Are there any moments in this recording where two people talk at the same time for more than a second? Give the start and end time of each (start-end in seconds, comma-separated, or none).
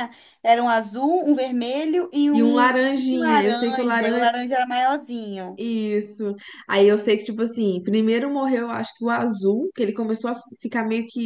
2.3-4.3